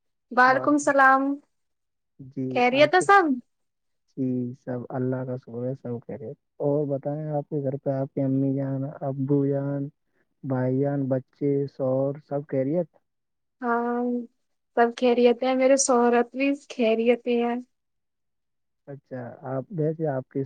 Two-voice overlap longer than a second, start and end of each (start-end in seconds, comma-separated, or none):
none